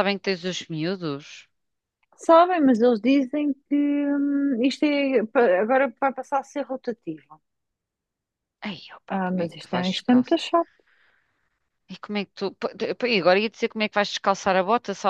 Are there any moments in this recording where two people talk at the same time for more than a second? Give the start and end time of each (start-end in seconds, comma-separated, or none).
9.1-10.4